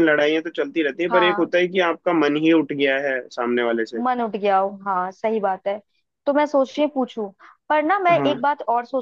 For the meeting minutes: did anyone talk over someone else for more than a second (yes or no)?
no